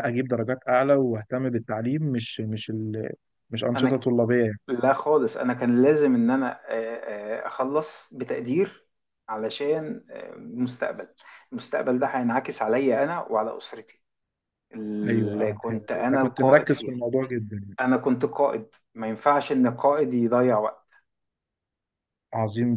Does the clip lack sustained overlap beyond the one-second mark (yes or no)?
no